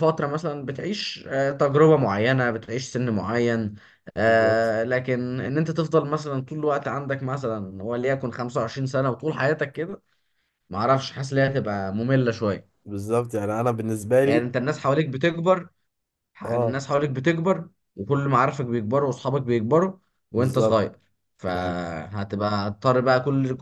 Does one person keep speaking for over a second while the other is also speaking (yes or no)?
no